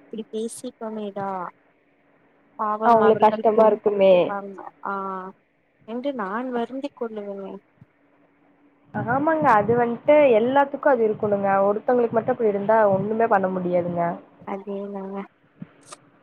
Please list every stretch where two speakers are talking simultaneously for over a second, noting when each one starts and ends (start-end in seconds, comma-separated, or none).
2.9-4.2